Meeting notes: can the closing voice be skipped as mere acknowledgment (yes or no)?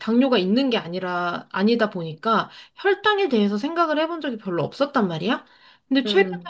yes